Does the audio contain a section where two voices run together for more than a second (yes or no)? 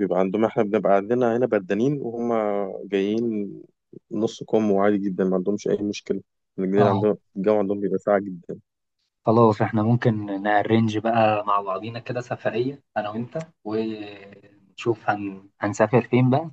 no